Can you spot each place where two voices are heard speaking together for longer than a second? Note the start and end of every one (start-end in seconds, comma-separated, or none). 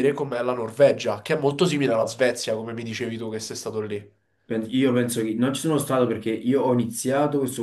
none